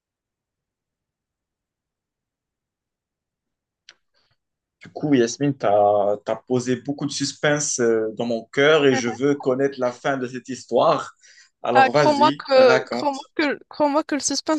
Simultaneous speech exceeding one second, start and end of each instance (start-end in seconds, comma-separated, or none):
11.7-13.3